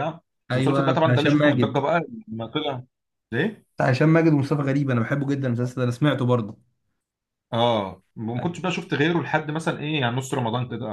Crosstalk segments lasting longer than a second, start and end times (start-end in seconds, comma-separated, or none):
0.5-1.8